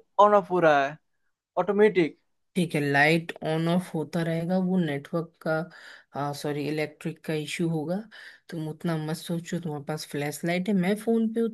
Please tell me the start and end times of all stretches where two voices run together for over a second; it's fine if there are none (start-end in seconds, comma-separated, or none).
none